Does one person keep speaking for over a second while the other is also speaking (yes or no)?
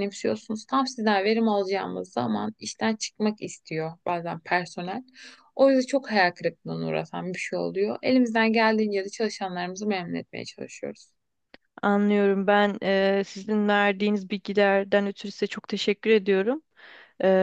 no